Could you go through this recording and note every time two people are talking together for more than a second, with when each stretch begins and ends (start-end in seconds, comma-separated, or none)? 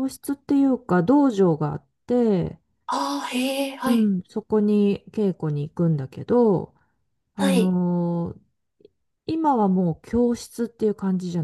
none